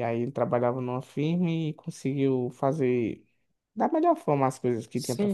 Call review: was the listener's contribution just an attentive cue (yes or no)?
no